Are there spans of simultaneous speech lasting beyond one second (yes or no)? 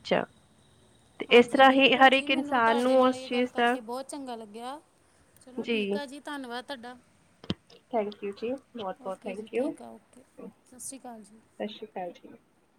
yes